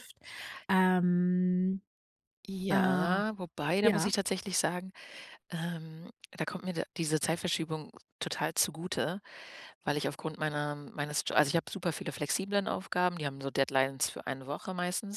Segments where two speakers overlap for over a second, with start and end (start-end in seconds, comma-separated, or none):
none